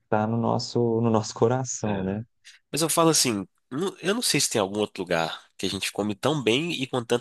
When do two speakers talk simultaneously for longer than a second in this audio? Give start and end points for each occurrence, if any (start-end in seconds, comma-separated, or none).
none